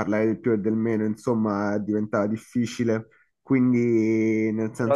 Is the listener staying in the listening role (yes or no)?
no